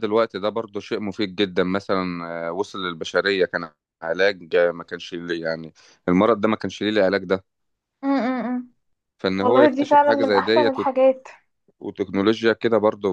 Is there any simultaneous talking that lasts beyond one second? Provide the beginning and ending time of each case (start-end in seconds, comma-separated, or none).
9.4-10.7